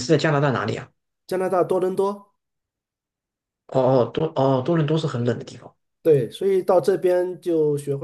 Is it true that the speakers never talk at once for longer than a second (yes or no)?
yes